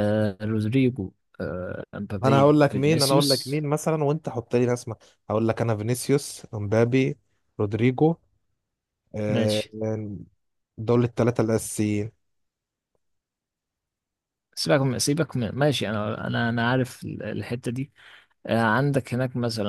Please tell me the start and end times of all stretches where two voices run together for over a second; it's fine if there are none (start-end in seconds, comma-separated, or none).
2.2-3.6